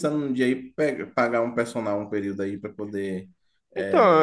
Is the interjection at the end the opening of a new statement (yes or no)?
yes